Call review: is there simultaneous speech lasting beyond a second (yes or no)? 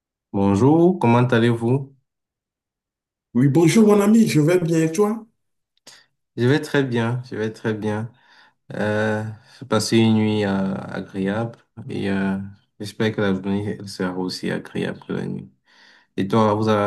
no